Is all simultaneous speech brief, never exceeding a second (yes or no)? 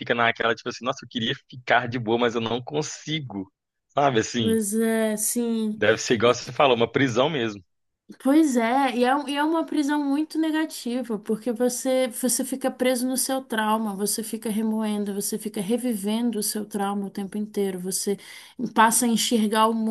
yes